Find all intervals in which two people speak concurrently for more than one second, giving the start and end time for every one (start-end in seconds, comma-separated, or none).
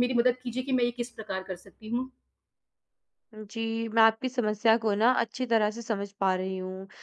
none